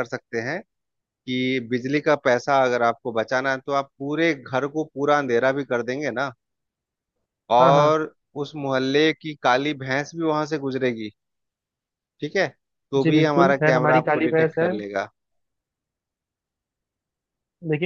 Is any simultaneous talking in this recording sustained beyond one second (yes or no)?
yes